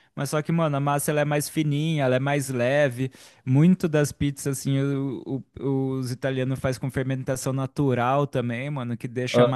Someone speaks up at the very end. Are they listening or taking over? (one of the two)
listening